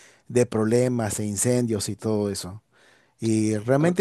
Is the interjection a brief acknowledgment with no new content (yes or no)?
yes